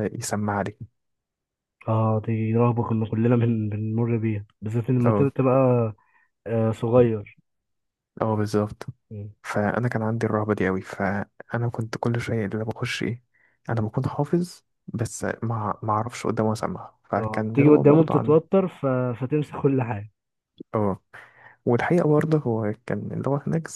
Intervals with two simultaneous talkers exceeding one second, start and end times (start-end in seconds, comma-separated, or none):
17.1-18.4